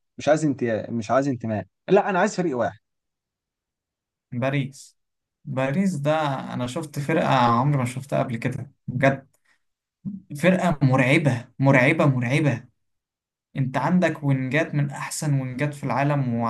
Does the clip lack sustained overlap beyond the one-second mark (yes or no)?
yes